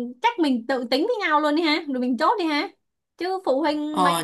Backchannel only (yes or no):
no